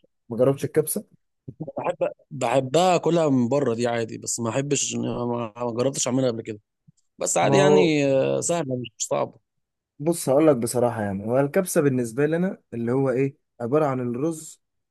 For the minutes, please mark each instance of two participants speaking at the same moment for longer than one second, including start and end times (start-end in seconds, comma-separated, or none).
none